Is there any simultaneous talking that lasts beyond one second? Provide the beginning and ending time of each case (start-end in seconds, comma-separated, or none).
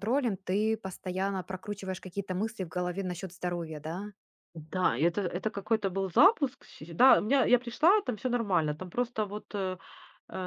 none